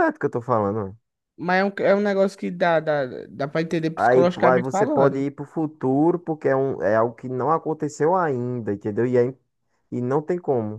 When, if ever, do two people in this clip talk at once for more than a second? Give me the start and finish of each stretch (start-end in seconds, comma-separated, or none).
4.0-5.3